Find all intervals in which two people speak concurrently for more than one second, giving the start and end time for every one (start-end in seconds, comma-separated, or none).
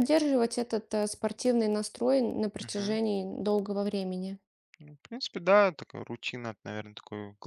none